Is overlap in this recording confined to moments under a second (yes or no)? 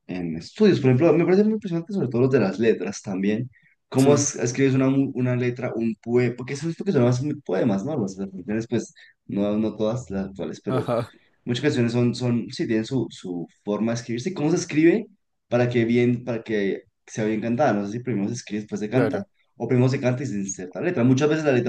yes